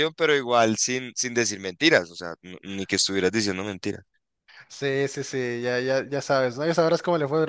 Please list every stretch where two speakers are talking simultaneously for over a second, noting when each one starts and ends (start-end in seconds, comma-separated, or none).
none